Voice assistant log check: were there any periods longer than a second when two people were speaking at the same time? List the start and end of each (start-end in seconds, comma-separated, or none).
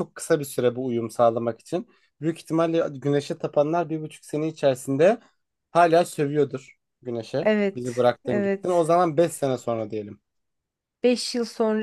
7.4-8.9